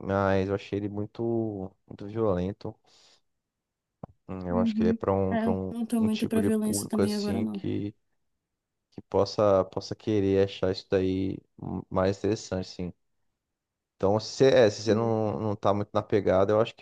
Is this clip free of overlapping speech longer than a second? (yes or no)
no